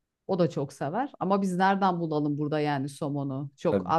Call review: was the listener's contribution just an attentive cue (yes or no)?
yes